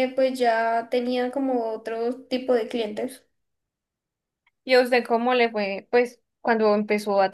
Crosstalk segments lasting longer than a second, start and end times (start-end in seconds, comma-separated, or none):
none